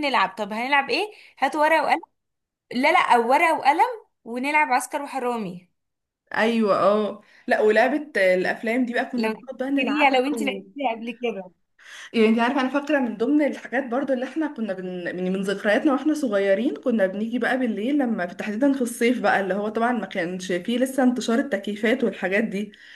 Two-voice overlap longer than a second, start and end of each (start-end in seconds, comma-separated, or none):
9.2-10.6